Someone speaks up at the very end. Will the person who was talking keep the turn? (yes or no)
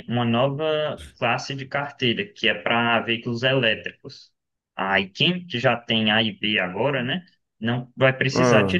yes